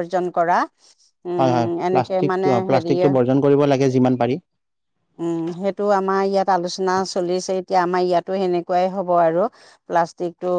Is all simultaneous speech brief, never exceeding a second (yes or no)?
no